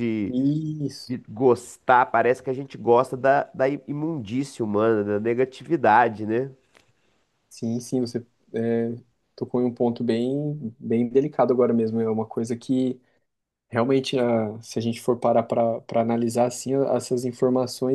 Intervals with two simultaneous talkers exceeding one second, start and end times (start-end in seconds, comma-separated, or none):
none